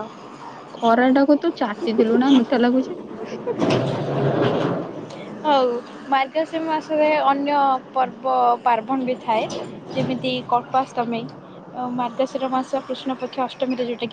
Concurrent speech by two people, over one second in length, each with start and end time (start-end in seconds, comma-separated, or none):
none